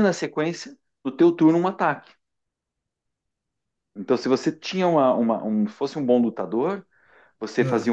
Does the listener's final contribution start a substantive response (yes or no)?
no